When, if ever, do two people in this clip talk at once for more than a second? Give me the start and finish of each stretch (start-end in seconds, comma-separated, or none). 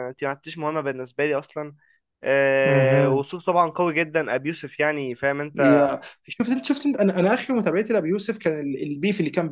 none